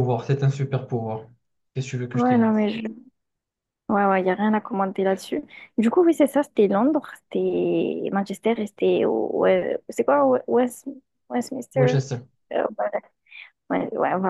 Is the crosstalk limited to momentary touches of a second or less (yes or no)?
yes